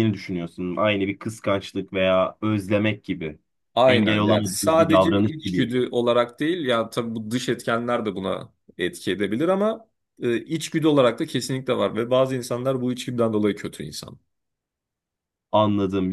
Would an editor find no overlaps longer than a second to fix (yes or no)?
no